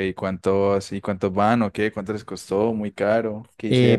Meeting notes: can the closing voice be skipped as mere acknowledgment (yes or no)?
no